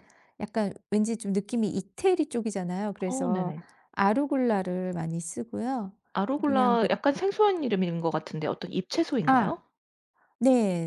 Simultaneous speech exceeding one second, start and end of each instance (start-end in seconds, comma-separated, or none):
none